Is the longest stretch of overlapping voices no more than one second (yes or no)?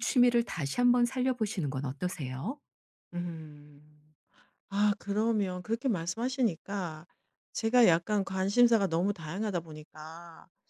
yes